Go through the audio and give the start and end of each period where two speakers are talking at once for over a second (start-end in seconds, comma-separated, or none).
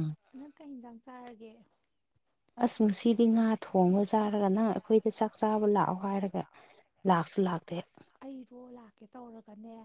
none